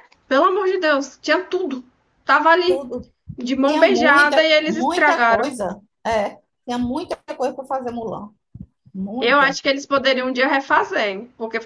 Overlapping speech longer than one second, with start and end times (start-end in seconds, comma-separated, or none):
3.6-5.6